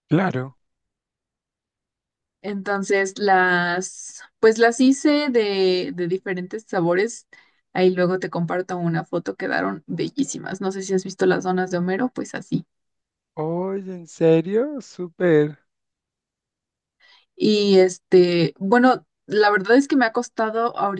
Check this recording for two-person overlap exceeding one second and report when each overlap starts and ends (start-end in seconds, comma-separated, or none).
none